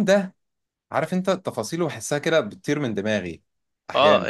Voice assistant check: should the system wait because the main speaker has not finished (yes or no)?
no